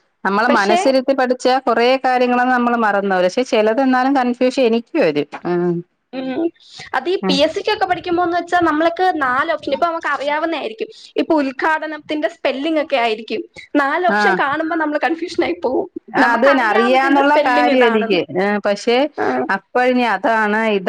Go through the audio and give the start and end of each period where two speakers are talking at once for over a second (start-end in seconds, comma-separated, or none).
16.2-18.2